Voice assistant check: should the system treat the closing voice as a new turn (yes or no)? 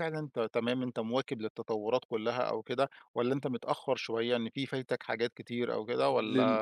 yes